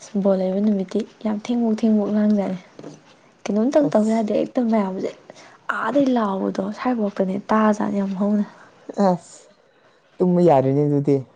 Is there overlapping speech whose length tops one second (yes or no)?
no